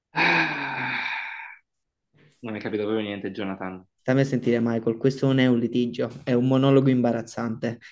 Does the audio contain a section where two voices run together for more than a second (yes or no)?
no